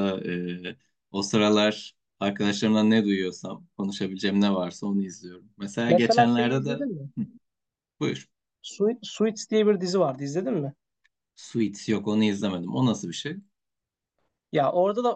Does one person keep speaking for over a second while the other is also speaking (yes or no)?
yes